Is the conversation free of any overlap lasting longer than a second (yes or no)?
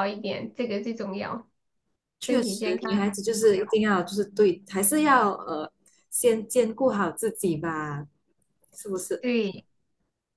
no